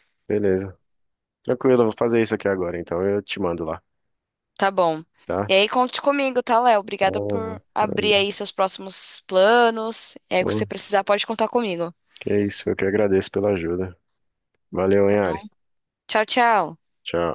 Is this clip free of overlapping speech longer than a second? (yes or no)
no